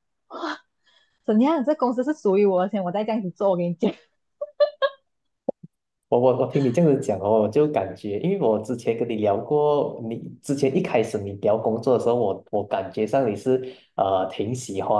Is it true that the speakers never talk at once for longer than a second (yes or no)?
yes